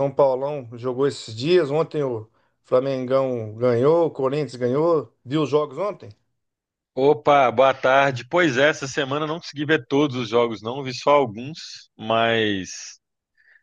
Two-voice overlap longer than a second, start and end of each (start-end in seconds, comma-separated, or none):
none